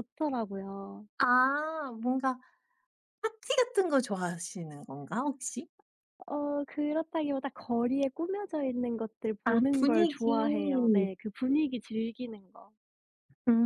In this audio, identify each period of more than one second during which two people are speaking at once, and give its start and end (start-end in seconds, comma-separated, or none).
9.4-11.1